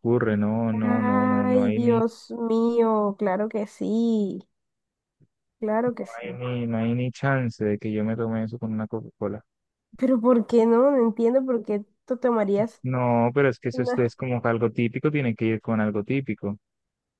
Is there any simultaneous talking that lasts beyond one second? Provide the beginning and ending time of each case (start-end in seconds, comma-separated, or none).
0.8-2.0